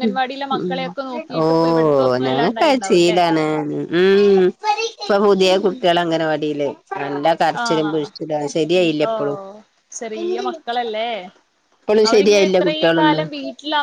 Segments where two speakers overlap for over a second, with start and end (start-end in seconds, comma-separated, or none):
1.4-3.2